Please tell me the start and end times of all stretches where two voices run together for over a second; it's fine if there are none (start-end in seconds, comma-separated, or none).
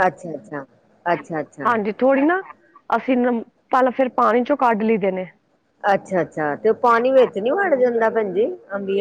none